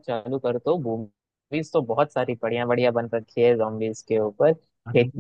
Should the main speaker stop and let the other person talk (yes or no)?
no